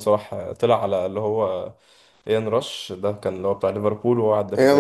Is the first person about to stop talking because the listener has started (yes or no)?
yes